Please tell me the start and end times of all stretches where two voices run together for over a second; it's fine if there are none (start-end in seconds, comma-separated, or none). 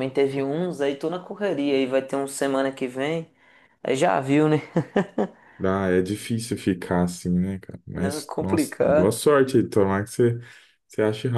7.9-9.2